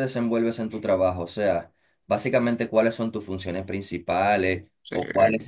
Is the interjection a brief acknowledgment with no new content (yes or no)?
yes